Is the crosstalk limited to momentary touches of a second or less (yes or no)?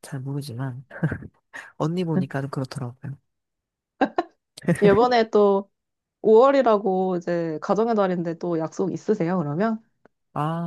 yes